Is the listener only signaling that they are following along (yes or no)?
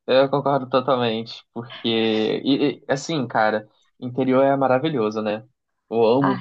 yes